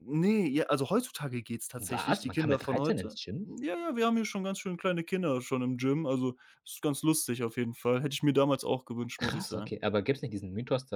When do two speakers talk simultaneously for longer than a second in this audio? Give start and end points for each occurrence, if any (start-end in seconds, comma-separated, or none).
1.8-3.5